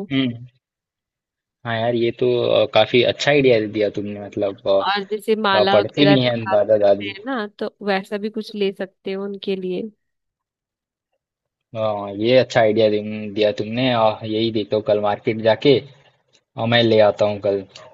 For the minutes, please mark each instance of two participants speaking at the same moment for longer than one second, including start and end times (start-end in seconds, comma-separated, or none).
5.5-7.2